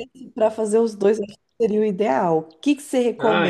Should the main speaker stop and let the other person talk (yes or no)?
no